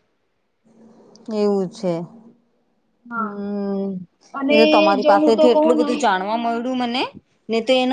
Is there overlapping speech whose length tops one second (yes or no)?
yes